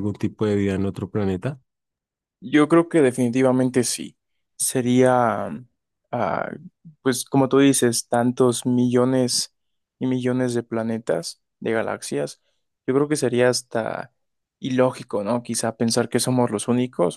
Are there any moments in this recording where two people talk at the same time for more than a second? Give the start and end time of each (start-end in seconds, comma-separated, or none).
none